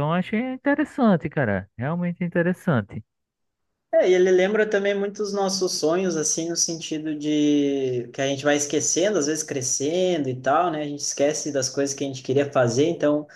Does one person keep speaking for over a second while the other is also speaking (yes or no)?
no